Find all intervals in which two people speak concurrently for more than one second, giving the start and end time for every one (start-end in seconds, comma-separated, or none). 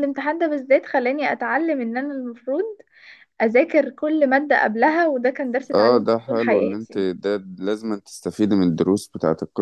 5.7-7.0